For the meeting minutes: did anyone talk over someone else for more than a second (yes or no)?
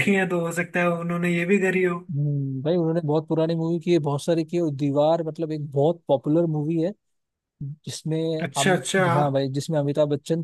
no